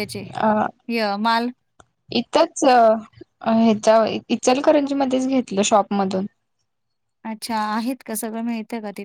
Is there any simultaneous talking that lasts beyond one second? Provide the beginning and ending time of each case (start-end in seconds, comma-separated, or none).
none